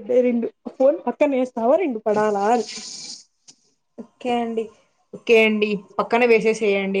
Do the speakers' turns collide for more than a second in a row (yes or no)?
no